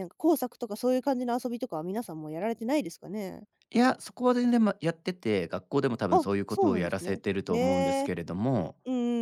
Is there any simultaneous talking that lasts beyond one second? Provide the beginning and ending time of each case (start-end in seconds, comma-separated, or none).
6.1-8.1